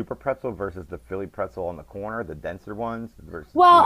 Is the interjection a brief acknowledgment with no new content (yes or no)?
no